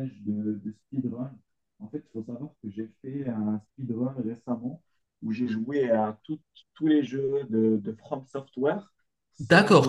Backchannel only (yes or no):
no